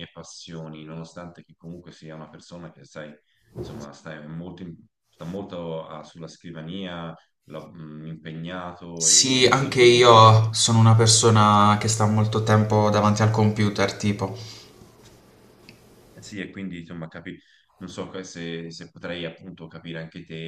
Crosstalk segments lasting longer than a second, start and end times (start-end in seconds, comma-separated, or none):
8.9-10.4